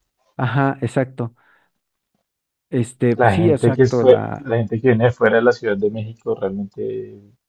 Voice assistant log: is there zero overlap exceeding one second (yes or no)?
no